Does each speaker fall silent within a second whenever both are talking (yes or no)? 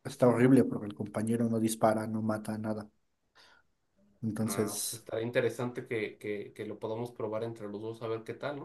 yes